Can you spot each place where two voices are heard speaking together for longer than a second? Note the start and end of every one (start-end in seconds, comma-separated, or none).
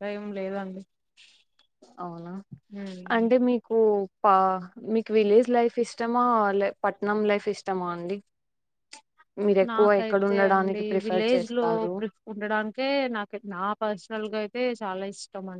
9.7-11.9